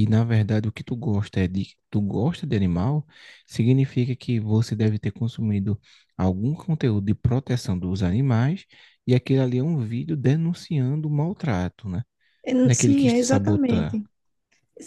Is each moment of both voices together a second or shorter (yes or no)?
no